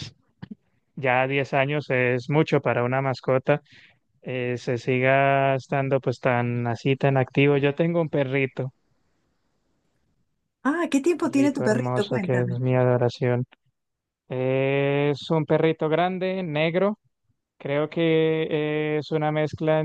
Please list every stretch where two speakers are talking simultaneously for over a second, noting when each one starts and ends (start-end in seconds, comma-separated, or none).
11.2-12.6